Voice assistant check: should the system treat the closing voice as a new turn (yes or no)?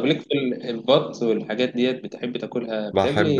yes